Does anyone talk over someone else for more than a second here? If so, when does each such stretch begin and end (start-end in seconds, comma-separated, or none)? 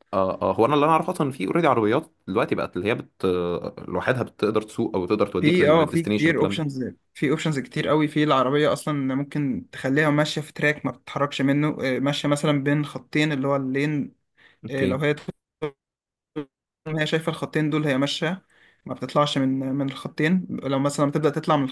5.4-6.6